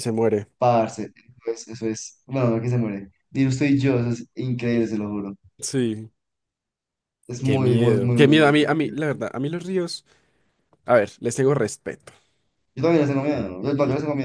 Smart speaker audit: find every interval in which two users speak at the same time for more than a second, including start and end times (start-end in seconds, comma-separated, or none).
7.4-9.3